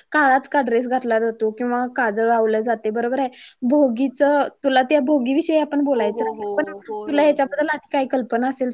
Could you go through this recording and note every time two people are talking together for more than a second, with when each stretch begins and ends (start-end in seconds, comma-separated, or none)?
6.0-7.6